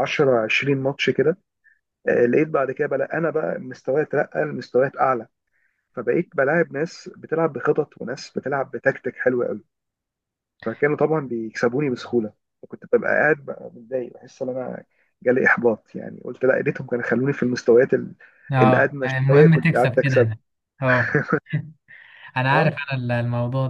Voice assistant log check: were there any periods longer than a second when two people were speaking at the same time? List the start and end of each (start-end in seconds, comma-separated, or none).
18.6-20.3